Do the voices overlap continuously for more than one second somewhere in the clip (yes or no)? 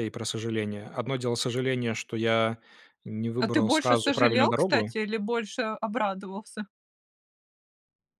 yes